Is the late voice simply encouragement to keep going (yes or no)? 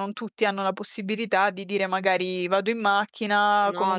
yes